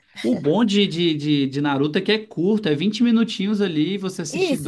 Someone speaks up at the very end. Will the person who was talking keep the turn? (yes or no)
no